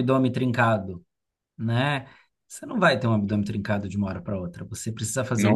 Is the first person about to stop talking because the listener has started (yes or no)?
no